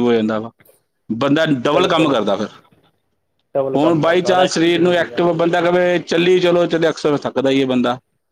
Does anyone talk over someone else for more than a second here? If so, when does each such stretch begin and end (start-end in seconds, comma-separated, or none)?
3.8-5.2